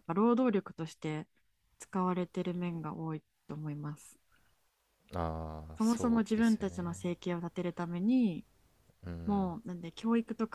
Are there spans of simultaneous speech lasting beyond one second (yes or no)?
yes